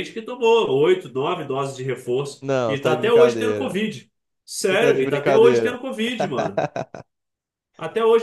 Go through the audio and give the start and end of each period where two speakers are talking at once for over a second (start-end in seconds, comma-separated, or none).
2.4-3.8, 4.6-5.8